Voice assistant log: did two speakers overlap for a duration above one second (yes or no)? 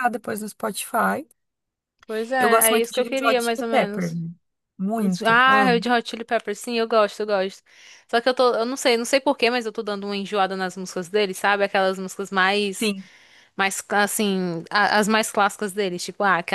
yes